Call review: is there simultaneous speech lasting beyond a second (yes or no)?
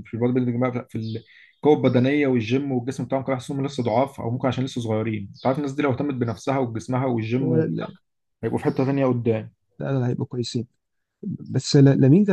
no